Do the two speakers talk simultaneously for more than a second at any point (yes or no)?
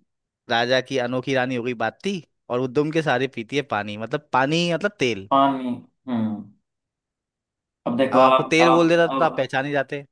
yes